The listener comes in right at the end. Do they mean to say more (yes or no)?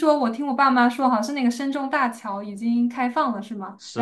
no